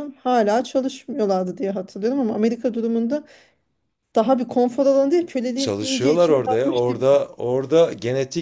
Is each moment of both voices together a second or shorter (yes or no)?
no